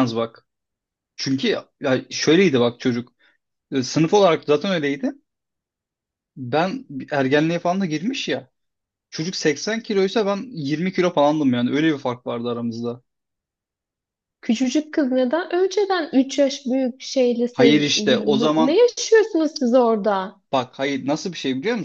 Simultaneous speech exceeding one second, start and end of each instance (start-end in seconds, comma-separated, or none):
17.5-18.8